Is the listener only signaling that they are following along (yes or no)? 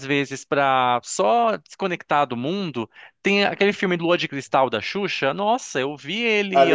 no